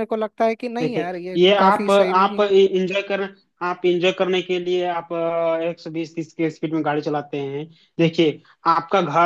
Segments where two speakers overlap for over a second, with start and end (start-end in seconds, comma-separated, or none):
0.8-2.5